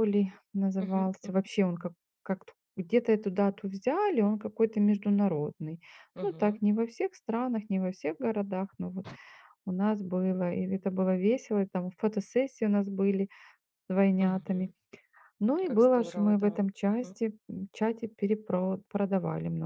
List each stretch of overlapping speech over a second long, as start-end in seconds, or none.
15.7-17.2